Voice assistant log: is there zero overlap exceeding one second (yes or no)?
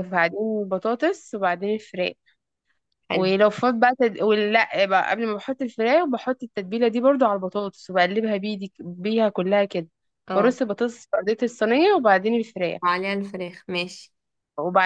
yes